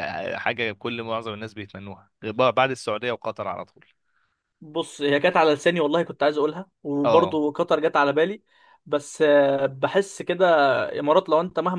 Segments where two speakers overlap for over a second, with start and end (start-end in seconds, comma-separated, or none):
none